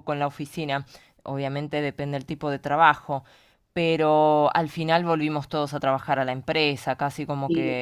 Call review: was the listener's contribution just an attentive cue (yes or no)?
yes